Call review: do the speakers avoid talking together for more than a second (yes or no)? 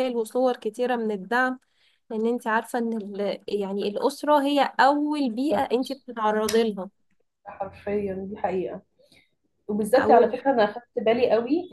yes